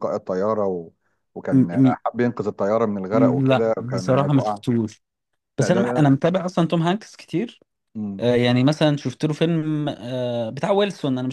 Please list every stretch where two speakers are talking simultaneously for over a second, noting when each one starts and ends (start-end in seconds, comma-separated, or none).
3.1-4.6